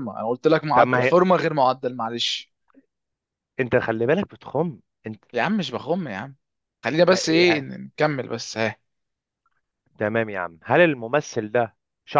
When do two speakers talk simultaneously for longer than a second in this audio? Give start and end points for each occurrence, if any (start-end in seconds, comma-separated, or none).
none